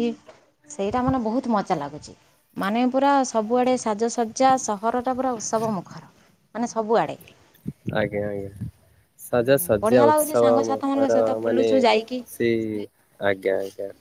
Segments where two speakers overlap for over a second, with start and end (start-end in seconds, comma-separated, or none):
9.8-11.7